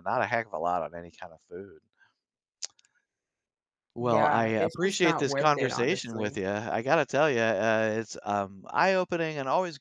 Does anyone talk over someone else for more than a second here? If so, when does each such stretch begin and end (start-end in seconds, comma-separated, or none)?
4.0-6.4